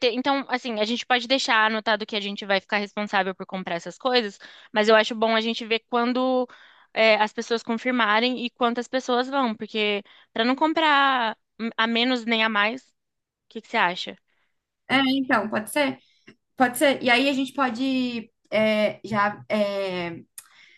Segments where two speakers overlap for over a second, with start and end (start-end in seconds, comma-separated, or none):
none